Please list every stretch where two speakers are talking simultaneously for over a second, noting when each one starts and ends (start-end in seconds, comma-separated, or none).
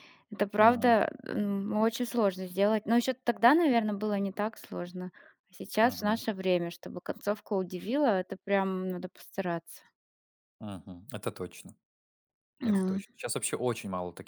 none